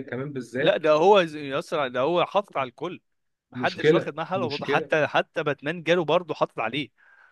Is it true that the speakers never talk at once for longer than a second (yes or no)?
no